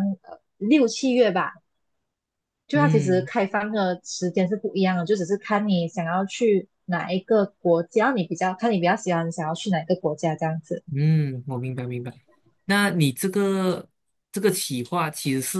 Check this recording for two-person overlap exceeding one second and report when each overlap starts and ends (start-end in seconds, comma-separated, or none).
none